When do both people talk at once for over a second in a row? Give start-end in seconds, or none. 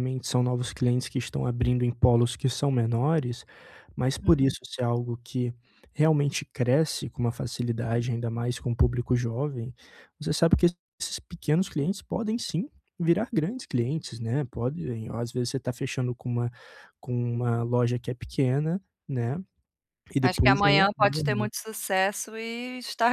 20.2-21.5